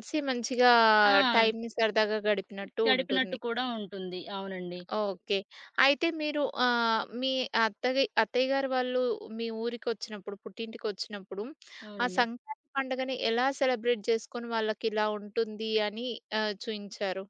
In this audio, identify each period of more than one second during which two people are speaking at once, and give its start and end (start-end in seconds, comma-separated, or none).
none